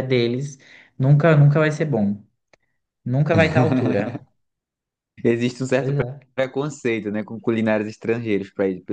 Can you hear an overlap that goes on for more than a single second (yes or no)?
no